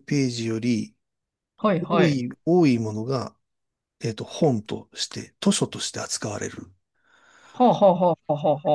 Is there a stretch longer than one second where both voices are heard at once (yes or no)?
no